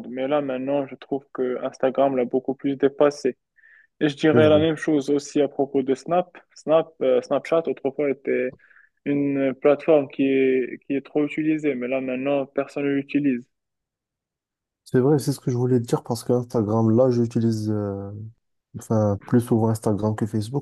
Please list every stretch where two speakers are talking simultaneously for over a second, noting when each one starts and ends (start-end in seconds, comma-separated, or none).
none